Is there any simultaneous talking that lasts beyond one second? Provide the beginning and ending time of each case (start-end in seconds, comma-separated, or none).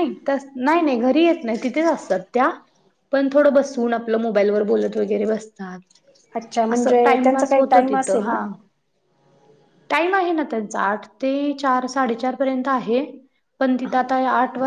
6.7-8.4